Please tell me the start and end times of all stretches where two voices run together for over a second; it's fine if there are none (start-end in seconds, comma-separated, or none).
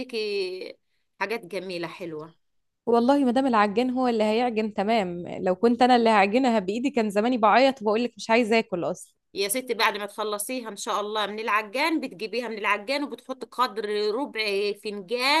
none